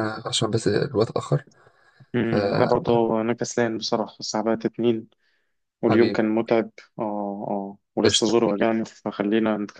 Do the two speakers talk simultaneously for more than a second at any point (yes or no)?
no